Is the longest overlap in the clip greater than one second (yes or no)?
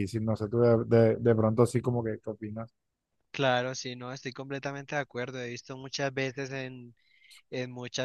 no